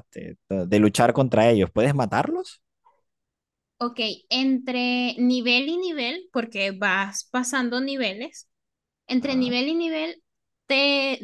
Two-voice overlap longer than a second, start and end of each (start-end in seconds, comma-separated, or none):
none